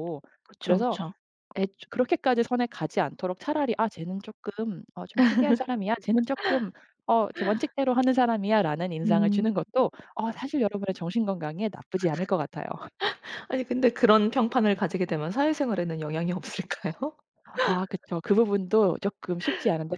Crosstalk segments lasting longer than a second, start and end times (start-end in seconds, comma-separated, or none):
none